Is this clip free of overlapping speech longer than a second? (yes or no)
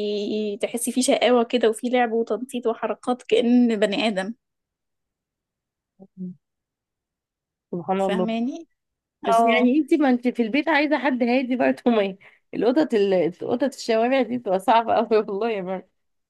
yes